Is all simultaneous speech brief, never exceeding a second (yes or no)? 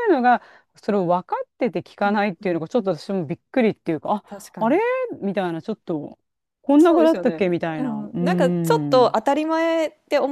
no